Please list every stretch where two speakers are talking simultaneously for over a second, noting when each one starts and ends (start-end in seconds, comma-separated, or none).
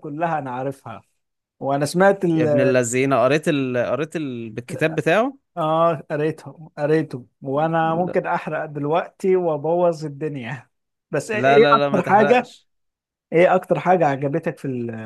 11.3-12.6